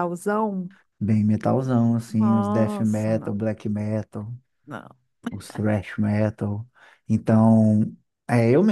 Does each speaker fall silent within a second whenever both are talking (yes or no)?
no